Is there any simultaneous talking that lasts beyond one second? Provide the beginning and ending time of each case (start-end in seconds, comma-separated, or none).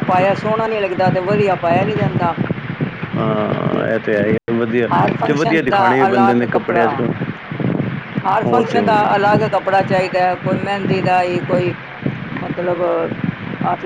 5.3-7.0